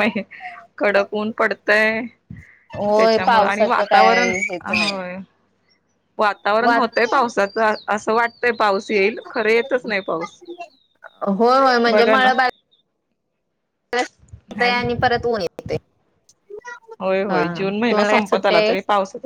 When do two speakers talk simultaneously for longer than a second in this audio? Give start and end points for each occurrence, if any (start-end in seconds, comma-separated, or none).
3.0-5.0